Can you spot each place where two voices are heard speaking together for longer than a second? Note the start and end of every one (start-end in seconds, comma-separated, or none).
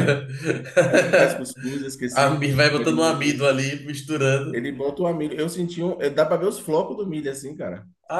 2.1-3.5